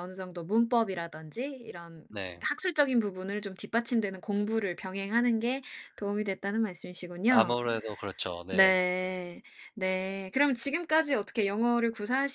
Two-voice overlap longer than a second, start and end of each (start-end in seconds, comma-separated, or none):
none